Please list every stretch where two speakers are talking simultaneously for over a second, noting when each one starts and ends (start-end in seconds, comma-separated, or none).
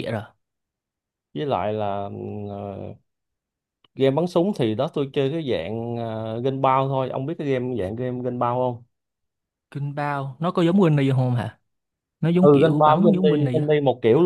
12.3-13.7